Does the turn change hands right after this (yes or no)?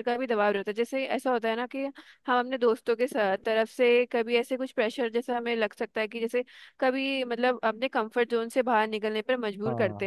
no